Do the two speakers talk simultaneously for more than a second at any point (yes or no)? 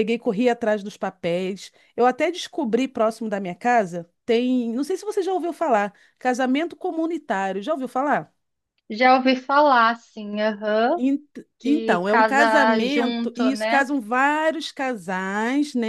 yes